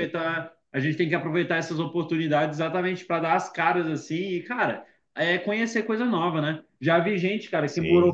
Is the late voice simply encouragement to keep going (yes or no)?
yes